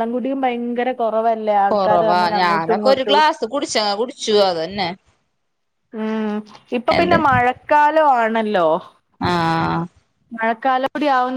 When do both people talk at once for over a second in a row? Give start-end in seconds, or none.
1.7-3.2